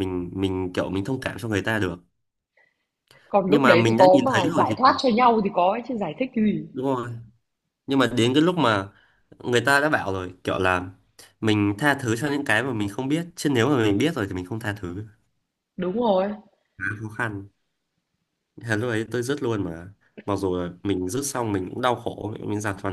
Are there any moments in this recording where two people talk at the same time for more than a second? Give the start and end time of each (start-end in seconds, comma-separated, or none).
3.5-5.0